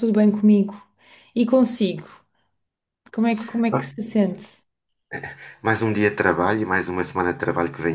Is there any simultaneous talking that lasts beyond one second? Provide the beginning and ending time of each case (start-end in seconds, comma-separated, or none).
none